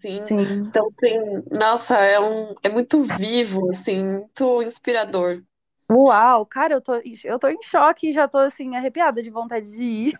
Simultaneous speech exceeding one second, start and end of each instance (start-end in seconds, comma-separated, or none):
none